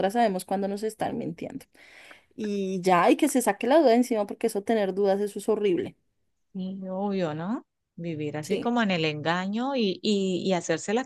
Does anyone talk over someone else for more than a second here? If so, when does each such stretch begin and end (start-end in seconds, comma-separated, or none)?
none